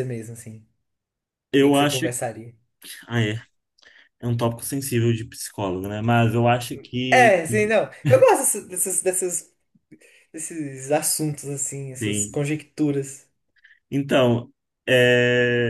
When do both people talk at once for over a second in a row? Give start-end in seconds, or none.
none